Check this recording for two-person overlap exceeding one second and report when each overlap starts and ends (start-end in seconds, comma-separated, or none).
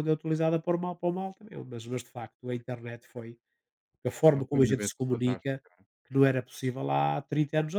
4.3-5.6